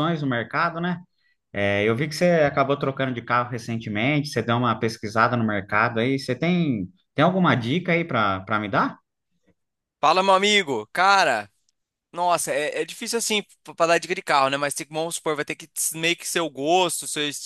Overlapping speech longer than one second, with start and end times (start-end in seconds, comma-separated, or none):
none